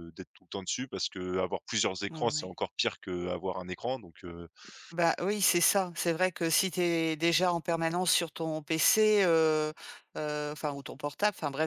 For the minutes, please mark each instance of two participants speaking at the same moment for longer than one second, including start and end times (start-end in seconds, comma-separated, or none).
none